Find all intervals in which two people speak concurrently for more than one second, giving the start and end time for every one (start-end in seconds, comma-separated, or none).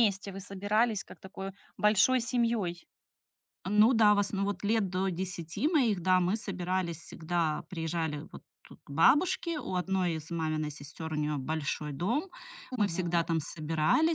none